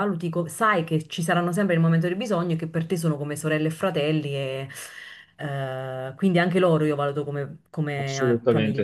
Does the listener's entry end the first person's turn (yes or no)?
yes